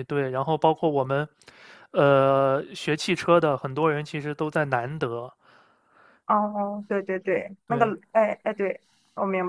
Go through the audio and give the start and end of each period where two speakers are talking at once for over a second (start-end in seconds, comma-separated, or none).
none